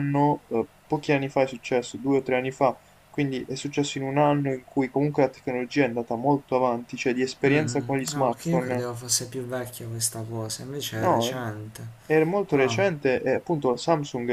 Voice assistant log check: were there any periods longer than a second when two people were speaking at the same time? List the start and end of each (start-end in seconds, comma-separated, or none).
7.5-8.8